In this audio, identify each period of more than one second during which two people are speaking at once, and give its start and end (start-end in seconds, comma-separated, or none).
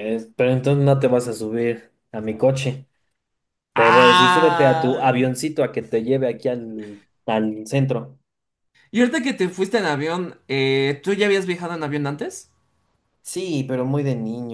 3.8-5.0